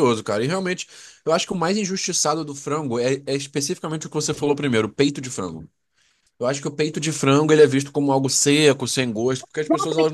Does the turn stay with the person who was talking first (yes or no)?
no